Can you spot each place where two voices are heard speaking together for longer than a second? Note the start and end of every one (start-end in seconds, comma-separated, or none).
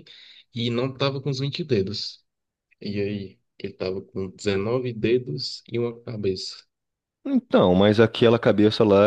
none